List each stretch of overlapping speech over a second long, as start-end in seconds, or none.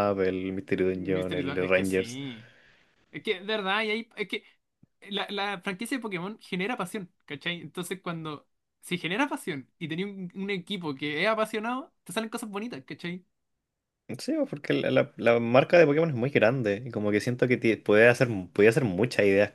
0.9-2.2